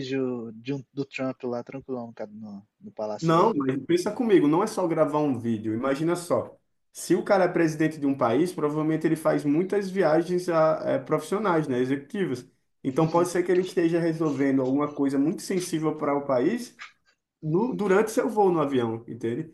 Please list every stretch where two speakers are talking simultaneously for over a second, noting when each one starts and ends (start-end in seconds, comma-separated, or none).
none